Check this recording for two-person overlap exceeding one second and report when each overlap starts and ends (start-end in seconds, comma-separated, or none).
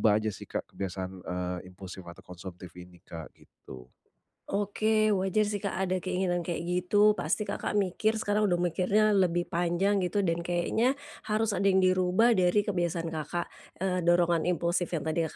none